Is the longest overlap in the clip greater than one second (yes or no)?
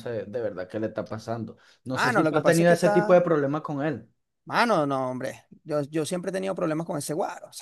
yes